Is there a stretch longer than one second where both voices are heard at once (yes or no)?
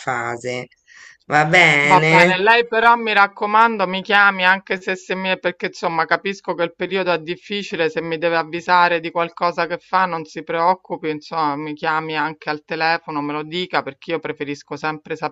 no